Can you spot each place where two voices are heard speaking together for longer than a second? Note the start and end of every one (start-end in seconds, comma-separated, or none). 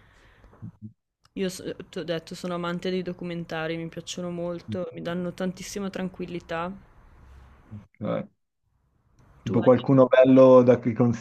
none